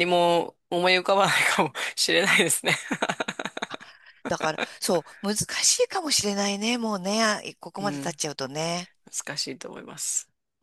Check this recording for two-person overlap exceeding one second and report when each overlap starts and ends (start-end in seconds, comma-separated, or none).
none